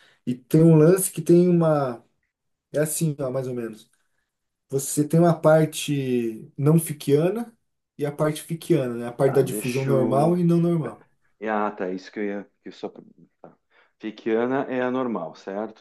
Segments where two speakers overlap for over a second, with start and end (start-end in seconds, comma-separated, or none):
9.2-11.0